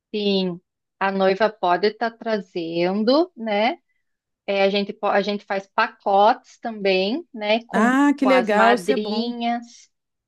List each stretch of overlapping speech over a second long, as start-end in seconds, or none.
7.7-9.4